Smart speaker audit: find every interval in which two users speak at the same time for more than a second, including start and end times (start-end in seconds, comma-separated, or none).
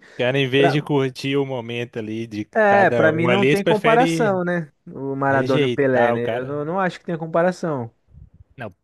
2.6-4.4, 5.3-6.6